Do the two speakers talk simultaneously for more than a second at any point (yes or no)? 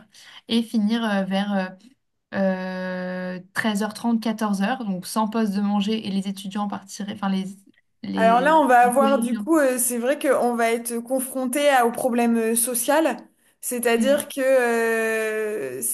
yes